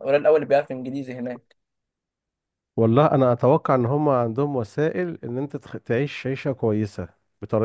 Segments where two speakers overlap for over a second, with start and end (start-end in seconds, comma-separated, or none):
none